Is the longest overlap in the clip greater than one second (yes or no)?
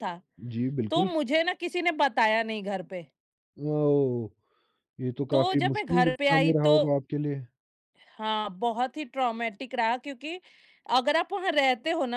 yes